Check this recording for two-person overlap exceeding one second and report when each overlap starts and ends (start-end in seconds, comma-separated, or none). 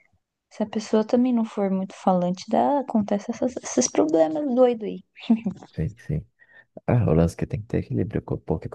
none